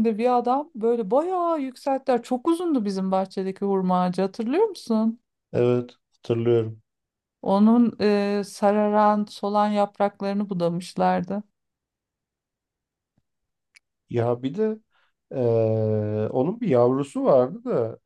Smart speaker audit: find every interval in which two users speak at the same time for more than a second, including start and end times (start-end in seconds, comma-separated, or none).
none